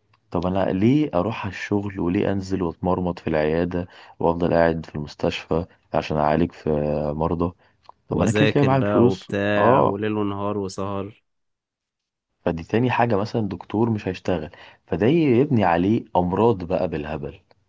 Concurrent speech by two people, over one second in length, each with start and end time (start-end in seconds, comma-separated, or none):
8.1-10.0